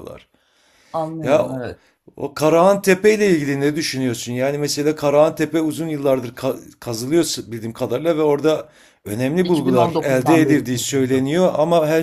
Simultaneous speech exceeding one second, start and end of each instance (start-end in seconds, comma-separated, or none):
9.4-11.3